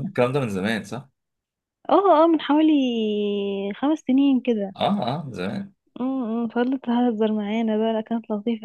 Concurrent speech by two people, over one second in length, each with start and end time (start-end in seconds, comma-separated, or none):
none